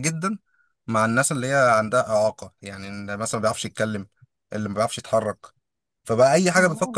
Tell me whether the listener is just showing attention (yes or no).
yes